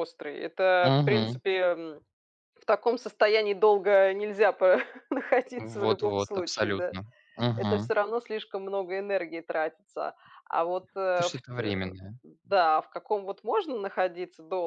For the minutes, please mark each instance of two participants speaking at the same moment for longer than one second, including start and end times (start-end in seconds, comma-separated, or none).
5.6-7.0